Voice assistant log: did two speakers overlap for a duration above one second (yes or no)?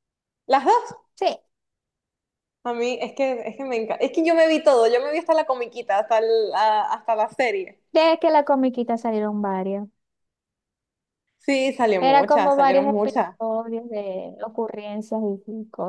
yes